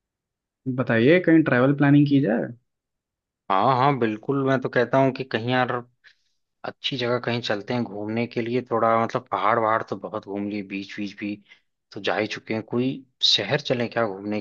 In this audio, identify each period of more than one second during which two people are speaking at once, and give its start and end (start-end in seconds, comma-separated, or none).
none